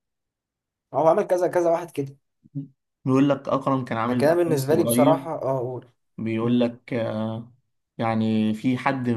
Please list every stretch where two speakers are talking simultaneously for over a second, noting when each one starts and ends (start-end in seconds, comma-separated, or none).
4.1-5.3